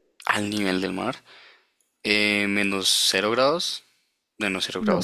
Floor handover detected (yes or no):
no